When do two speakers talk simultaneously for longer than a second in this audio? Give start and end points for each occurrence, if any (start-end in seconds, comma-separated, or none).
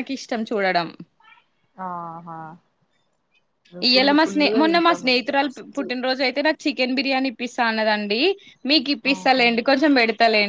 3.9-5.8